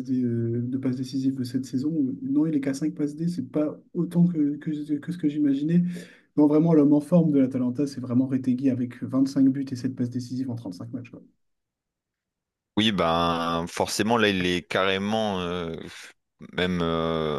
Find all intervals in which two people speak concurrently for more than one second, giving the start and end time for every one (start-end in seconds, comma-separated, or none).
none